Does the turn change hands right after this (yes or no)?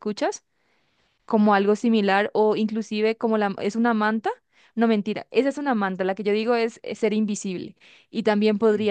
no